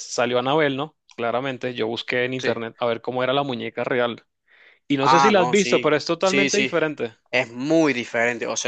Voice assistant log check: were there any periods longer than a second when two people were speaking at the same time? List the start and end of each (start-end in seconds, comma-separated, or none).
5.0-6.7